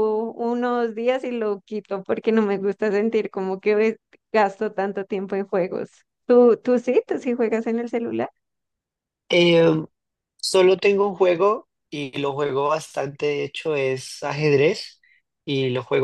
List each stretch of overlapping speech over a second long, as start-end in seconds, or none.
none